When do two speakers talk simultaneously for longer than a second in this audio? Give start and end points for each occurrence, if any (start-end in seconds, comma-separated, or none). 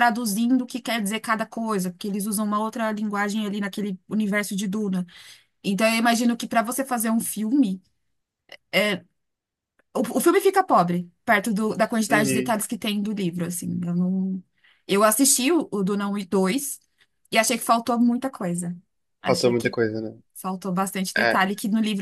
none